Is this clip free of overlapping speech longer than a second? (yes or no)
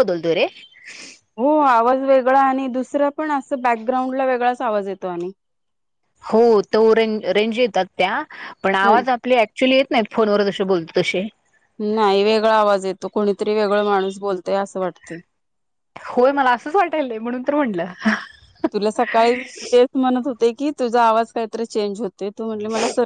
yes